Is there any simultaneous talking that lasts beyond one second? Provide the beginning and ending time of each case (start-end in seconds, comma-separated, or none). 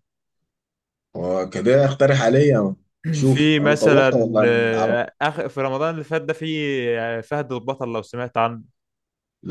3.2-5.0